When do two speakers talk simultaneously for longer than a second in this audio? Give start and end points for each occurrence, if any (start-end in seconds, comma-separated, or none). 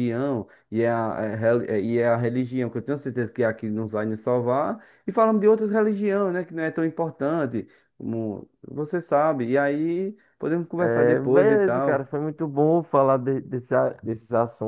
10.8-12.1